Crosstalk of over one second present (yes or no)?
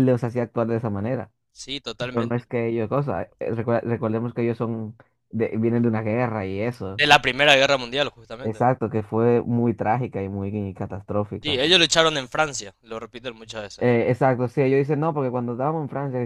no